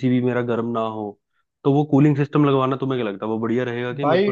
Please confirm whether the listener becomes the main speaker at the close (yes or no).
yes